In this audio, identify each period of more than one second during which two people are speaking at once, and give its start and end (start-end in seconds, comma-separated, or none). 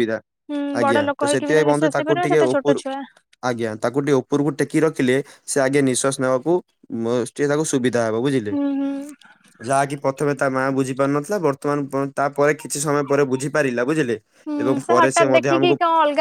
0.8-2.8